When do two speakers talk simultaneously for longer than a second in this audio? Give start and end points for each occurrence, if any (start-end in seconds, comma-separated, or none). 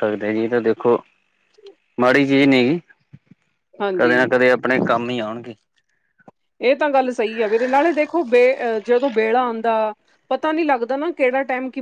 none